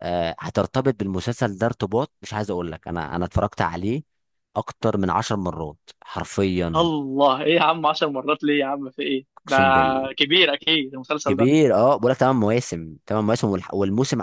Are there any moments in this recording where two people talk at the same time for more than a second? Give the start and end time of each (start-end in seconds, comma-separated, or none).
none